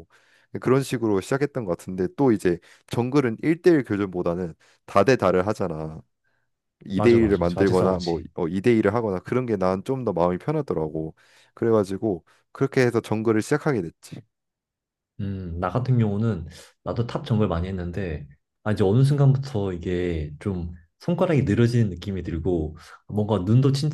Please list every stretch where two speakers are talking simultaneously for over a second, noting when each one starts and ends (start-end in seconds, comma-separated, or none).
6.9-8.3